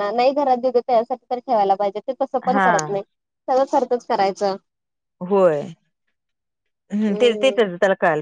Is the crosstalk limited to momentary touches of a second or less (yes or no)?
yes